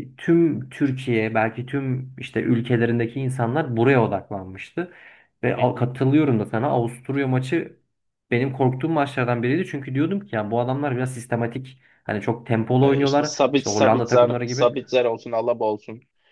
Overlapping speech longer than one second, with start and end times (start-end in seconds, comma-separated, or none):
12.8-14.7